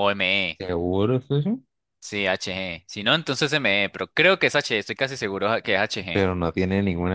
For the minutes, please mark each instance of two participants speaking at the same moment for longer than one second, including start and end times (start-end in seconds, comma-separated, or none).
none